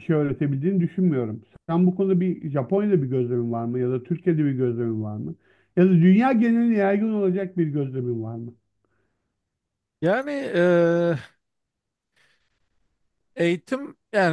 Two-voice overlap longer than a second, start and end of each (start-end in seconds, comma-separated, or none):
none